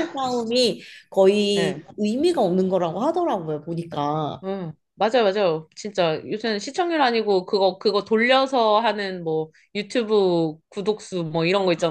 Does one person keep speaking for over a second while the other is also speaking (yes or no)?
no